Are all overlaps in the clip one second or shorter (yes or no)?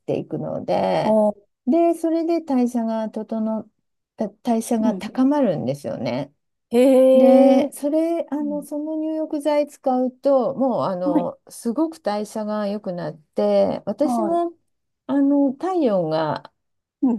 yes